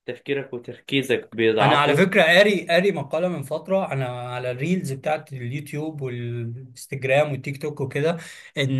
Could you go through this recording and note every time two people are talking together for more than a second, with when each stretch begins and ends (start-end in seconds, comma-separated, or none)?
none